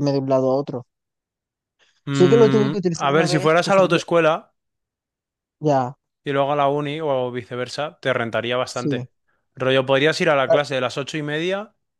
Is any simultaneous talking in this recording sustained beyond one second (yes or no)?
yes